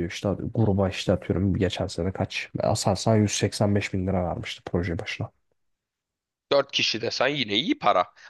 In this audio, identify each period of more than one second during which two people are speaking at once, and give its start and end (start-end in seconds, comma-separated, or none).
none